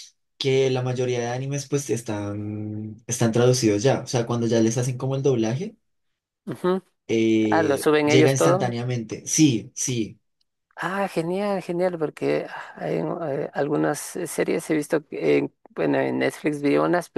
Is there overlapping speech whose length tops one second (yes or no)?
yes